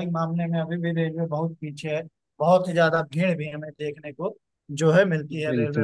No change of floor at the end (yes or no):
no